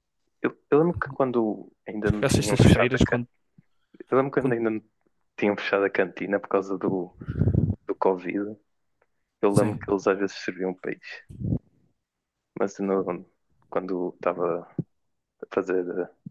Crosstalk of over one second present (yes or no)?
yes